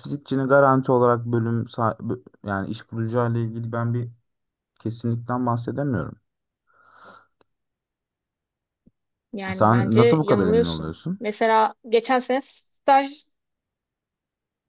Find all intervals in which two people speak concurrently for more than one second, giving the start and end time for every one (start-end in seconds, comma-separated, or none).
9.5-11.2